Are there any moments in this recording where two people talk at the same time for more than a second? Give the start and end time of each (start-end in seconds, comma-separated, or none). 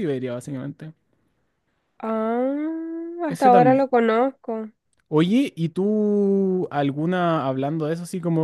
none